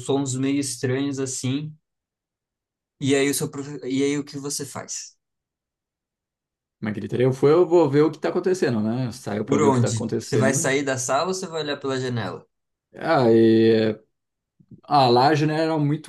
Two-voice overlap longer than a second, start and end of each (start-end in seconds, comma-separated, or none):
9.4-10.7